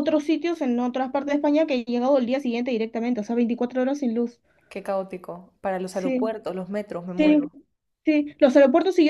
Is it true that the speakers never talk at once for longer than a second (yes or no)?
yes